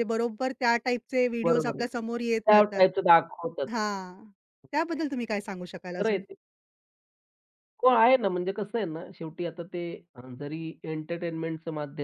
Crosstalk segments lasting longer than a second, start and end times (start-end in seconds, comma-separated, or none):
1.4-2.9